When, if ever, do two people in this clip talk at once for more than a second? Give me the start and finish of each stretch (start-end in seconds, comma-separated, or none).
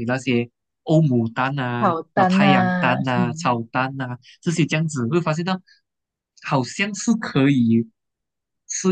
1.8-3.6